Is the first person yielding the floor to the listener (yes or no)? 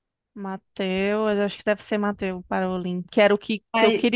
no